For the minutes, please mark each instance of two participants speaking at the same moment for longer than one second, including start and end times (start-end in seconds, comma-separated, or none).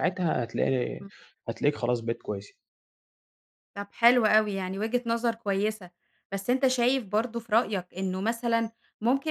none